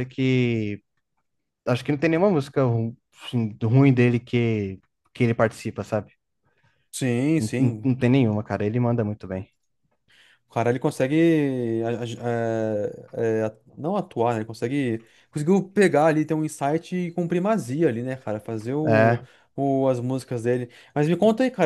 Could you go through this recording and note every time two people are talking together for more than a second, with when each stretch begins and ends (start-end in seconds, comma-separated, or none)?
none